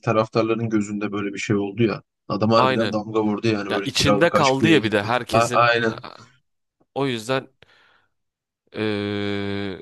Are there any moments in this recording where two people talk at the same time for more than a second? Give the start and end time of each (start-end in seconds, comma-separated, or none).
3.7-5.7